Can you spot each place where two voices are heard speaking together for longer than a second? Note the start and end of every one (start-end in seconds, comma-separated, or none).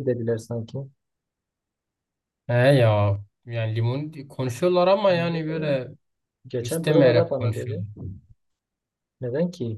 6.6-7.8